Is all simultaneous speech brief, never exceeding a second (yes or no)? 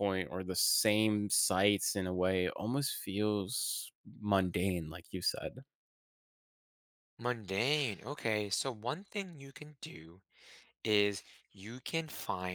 yes